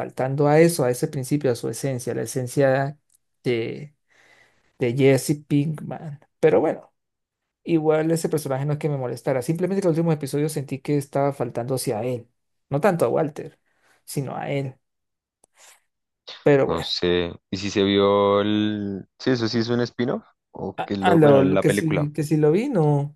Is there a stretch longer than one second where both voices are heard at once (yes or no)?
yes